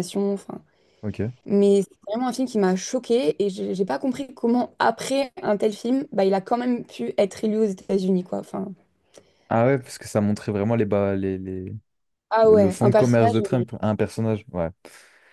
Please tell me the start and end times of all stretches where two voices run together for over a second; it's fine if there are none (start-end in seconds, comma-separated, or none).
12.4-13.7